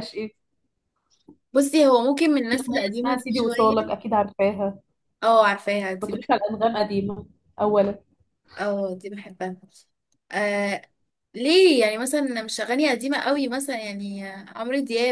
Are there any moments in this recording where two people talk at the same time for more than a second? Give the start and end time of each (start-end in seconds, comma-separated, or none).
2.5-3.9